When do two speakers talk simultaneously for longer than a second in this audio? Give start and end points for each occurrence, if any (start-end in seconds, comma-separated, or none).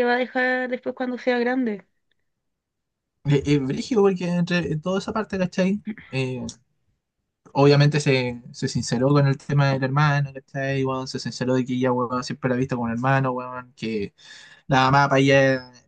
none